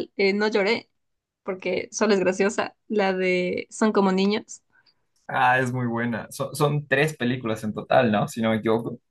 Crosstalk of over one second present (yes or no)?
no